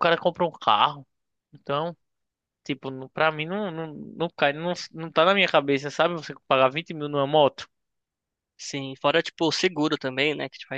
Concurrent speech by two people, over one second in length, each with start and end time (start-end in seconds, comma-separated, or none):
none